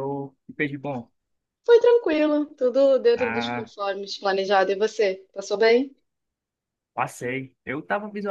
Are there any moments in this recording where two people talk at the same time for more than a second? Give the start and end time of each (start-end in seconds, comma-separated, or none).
none